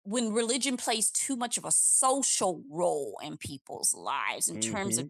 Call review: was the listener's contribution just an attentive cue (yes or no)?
yes